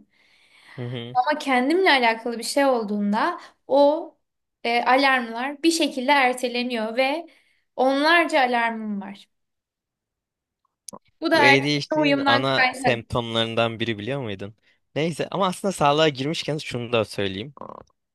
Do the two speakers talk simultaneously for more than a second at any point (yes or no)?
yes